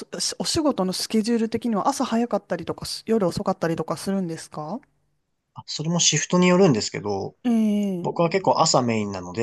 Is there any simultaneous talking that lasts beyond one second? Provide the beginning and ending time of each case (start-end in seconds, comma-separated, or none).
none